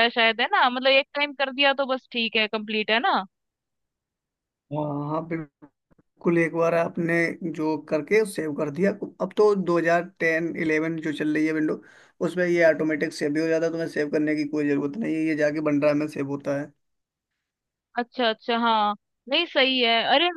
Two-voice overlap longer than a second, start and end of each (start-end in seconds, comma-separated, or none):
none